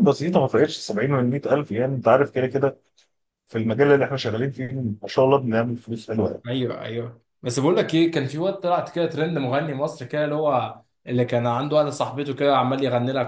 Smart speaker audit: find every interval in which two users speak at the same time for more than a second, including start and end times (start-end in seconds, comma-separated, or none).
none